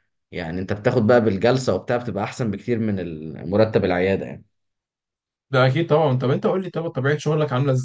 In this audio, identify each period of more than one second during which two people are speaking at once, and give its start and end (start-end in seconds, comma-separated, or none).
none